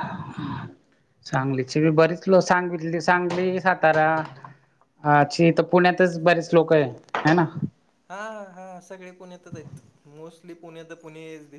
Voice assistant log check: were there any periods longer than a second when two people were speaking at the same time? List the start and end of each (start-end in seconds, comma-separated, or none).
none